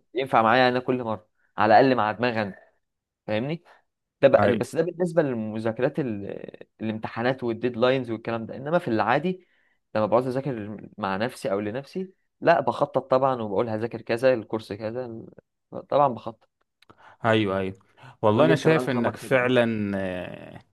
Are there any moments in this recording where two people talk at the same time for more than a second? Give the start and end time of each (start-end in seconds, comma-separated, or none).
18.3-19.6